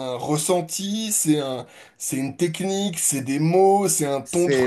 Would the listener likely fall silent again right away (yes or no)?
no